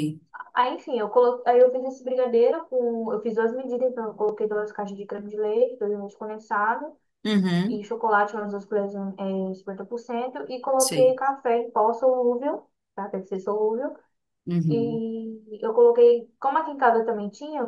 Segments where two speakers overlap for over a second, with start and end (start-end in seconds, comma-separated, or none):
none